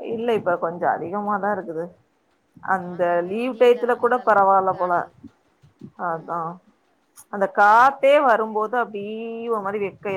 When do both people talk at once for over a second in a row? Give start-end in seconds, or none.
2.8-4.9